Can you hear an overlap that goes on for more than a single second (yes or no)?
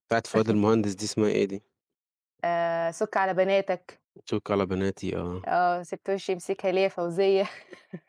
no